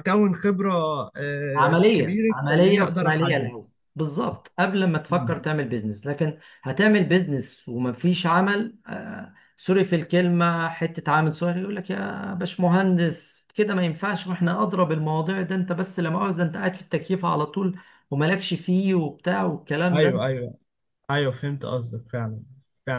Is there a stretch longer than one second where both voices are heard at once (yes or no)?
yes